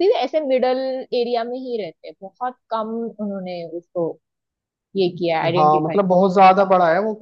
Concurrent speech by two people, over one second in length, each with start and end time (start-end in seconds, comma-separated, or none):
none